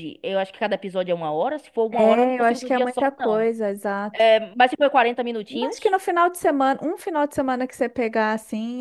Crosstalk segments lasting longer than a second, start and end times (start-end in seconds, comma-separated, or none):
1.9-3.5